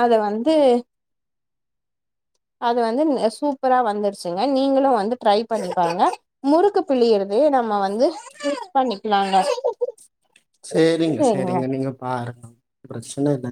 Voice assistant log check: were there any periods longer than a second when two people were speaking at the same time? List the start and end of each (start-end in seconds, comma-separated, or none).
none